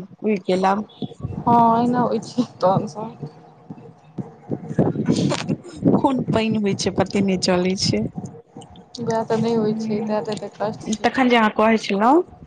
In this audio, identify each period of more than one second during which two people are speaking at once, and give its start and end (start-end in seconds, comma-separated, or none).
9.6-11.1